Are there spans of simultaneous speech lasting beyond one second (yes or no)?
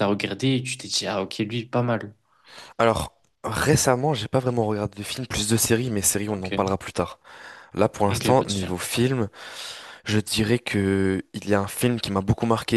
no